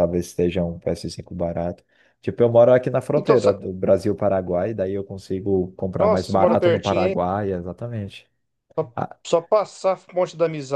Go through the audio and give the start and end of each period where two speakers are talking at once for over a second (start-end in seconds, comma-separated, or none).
6.0-7.2